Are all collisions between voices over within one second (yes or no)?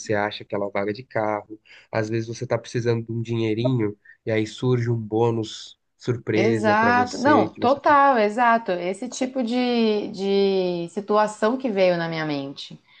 no